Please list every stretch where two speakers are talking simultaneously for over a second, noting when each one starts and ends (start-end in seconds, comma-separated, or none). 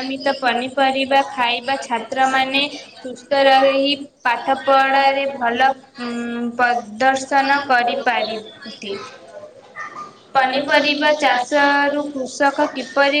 11.2-12.7